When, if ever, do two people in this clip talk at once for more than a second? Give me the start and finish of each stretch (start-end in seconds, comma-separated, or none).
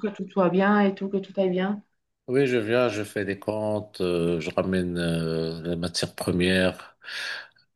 none